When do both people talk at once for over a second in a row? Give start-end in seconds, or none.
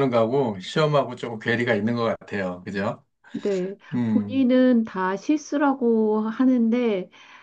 none